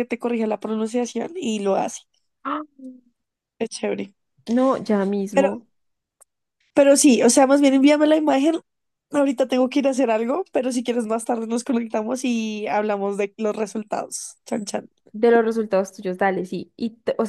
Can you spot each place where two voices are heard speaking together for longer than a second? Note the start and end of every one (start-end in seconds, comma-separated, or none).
none